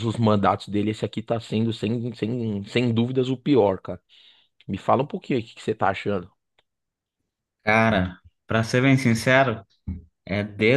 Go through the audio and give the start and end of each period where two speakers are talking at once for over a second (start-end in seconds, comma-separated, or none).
none